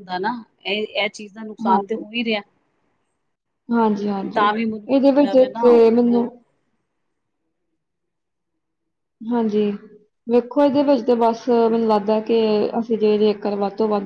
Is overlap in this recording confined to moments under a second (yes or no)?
no